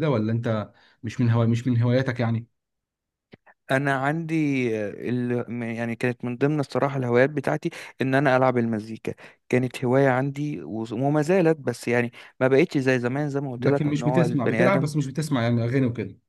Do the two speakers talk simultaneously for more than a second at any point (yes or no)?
yes